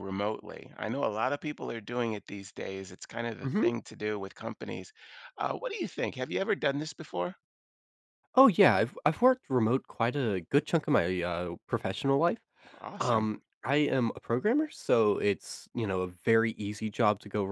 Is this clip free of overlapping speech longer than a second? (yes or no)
yes